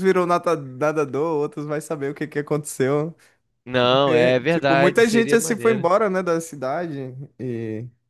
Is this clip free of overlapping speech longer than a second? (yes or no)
no